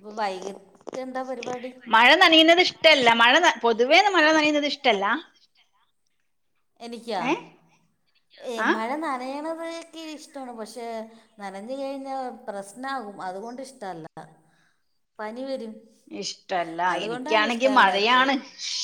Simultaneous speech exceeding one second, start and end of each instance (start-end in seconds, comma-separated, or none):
16.9-18.3